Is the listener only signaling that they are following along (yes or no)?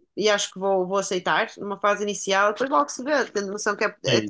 yes